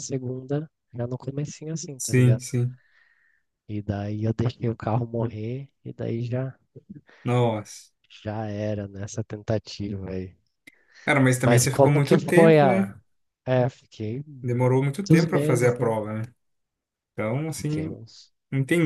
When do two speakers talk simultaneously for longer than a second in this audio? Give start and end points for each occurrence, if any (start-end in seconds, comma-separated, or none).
11.4-12.9, 14.4-15.9